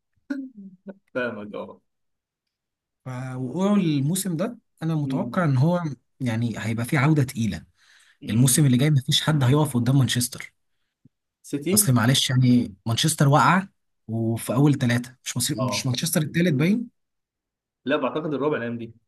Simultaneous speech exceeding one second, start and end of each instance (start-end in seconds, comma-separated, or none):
none